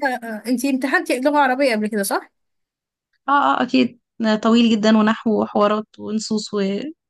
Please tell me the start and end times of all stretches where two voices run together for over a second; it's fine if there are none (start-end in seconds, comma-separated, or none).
none